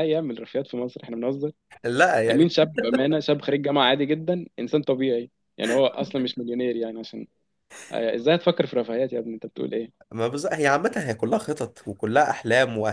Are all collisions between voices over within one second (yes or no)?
yes